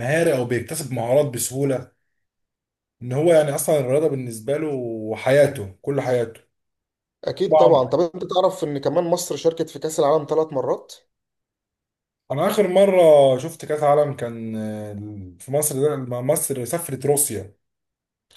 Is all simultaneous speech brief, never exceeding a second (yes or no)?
yes